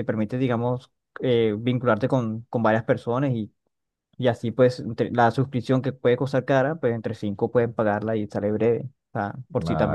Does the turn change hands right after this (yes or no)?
yes